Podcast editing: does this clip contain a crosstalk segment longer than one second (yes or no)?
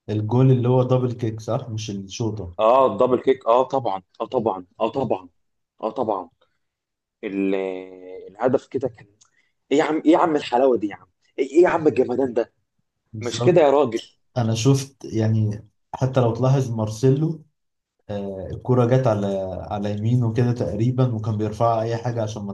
no